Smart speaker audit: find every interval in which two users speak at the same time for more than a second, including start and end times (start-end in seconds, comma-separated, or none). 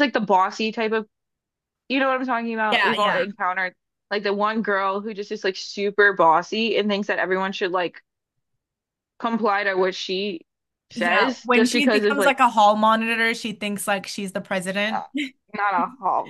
10.9-12.4